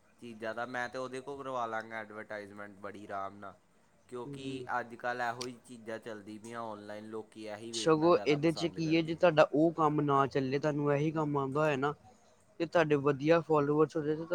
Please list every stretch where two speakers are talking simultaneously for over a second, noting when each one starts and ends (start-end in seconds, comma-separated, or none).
7.8-9.3